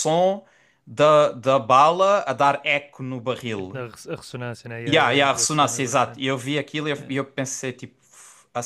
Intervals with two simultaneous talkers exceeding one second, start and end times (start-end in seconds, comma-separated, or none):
4.9-6.2